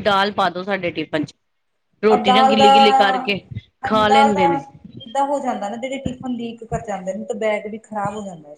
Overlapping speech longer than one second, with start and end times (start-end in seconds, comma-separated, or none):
none